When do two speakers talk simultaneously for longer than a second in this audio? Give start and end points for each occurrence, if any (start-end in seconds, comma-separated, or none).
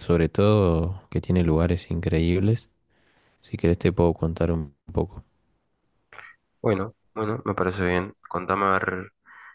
none